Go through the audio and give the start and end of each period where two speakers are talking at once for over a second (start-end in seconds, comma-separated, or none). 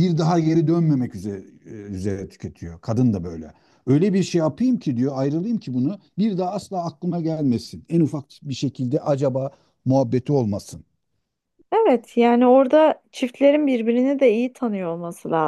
none